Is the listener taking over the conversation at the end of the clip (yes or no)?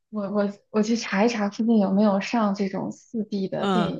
yes